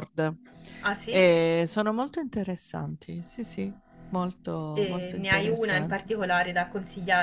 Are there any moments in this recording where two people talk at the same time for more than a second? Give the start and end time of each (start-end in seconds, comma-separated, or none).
4.7-6.1